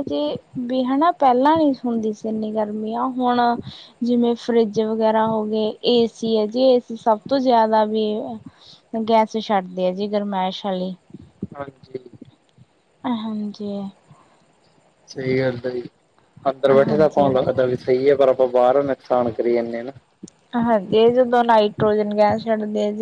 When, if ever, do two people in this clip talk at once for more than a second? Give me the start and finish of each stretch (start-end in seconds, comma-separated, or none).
none